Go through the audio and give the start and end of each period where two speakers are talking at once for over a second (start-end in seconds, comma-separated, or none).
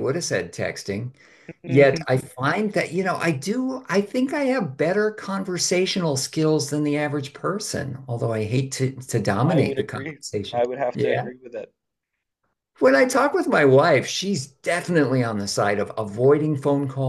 9.4-11.3